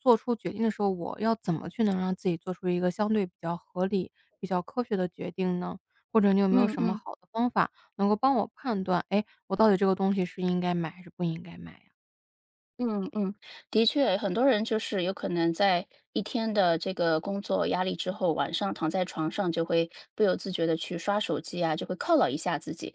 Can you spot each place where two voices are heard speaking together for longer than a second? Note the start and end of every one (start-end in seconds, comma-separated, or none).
none